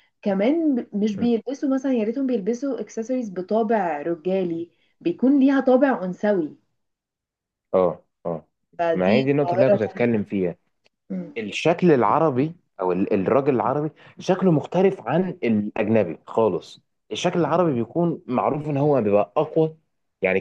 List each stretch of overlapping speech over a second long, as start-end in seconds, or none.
8.9-10.2